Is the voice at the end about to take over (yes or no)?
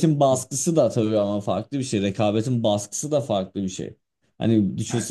no